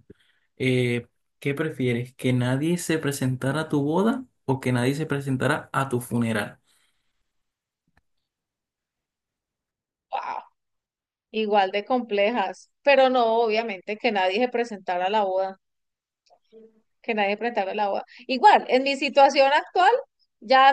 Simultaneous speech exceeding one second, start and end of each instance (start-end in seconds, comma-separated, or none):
none